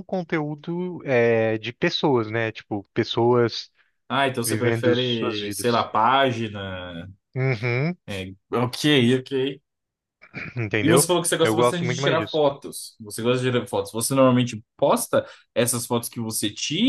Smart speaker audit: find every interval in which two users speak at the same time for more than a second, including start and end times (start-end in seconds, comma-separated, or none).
4.4-5.9, 10.8-12.4